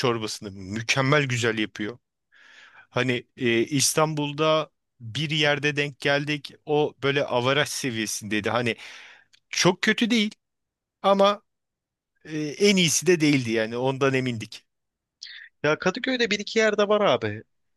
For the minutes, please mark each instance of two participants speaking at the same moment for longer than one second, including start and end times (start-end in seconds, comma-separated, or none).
none